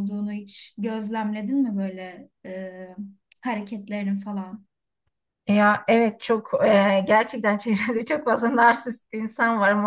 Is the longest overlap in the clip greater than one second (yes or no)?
no